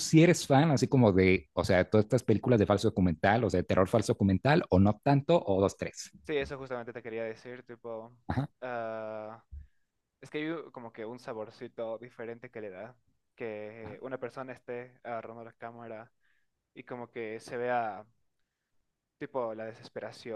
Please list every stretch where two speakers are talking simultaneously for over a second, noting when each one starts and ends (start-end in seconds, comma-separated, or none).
none